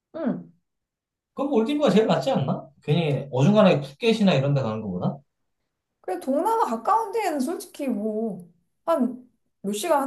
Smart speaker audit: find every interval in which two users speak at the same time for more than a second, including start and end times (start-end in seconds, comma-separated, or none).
none